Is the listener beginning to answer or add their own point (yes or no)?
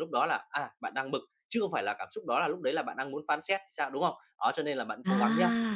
no